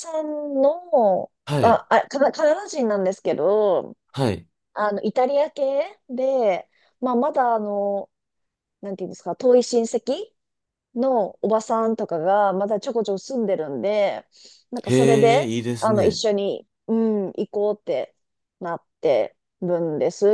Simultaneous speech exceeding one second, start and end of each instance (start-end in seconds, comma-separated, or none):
14.8-16.2